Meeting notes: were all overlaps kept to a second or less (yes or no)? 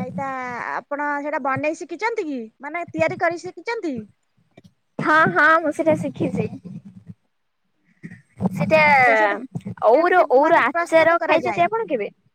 no